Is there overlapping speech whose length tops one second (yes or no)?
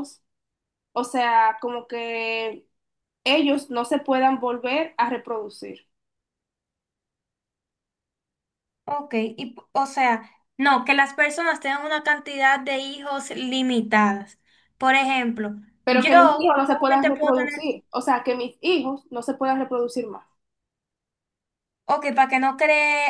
yes